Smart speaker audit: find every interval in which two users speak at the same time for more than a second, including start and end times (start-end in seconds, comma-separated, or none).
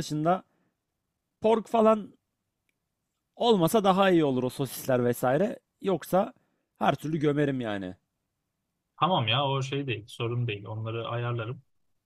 none